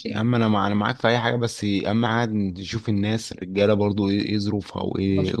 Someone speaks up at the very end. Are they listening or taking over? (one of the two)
taking over